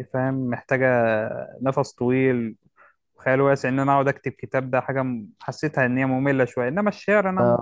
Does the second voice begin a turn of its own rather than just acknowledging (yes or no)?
yes